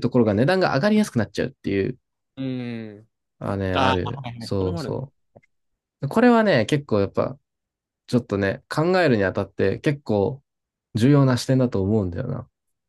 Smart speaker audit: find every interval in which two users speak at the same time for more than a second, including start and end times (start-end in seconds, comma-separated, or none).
3.7-5.0